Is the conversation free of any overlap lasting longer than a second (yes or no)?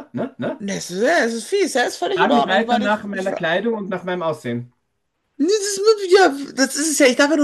no